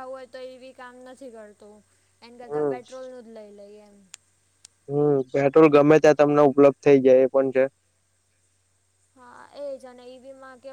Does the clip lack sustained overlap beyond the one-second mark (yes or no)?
yes